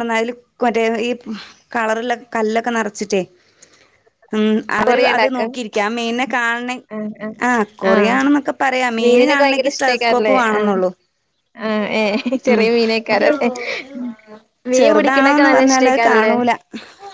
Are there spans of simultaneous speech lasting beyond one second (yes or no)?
yes